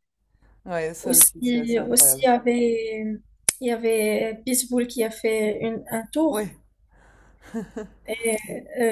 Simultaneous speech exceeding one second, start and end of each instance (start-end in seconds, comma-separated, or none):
1.0-2.3